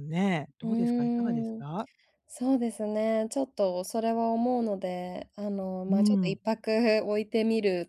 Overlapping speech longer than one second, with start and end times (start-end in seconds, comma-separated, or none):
none